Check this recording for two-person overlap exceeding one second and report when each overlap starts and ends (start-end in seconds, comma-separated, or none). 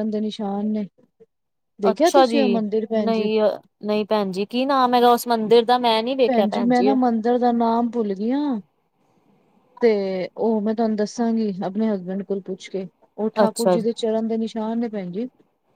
none